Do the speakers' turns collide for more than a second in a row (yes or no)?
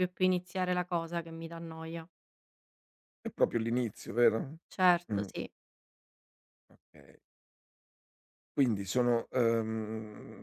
no